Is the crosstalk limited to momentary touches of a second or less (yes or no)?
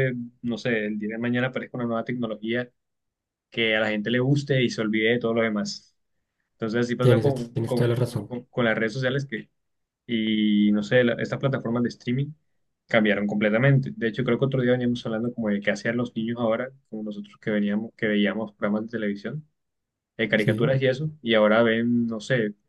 no